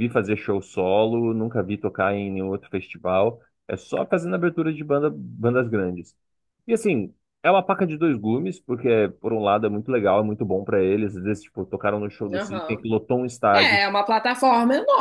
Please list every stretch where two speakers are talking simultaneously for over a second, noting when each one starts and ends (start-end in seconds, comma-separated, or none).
none